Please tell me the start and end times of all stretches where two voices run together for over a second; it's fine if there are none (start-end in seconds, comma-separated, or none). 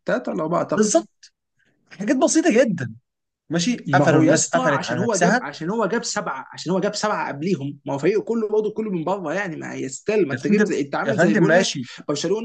3.9-5.4, 10.3-11.9